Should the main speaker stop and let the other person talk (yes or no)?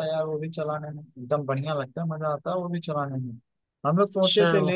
no